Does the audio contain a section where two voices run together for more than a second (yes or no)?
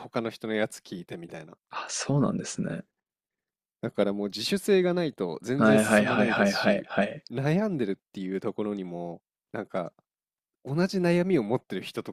yes